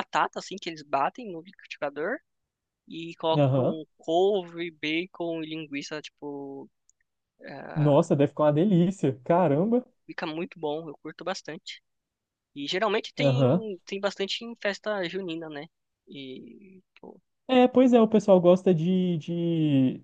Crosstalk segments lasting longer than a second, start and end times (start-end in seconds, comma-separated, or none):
none